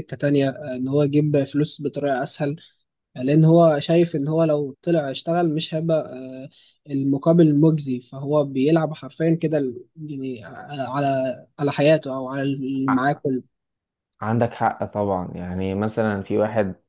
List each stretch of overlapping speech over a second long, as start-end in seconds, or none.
none